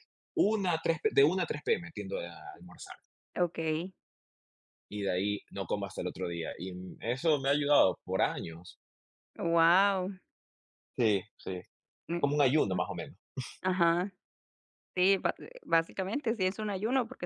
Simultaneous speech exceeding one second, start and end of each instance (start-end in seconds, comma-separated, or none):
none